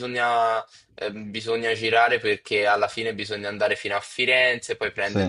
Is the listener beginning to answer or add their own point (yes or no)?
no